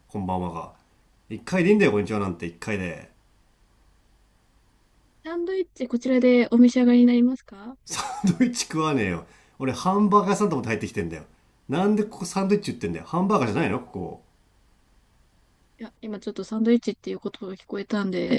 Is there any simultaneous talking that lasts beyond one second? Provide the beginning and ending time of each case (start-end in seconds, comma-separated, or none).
none